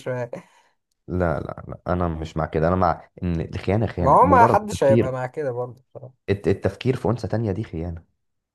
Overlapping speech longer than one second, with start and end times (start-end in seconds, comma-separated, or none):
4.0-5.2